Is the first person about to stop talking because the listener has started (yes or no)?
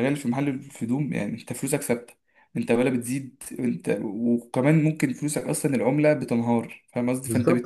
yes